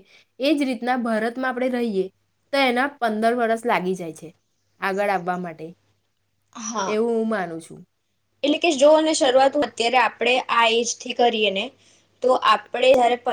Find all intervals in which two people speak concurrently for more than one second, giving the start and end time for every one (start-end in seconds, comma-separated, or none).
none